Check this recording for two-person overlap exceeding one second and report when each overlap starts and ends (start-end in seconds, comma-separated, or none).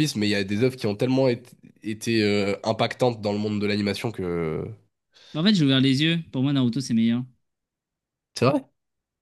none